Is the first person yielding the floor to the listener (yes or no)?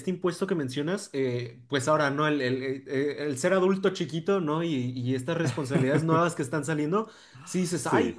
no